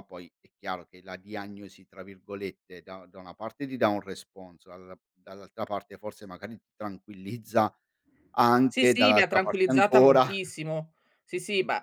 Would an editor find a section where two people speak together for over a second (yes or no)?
yes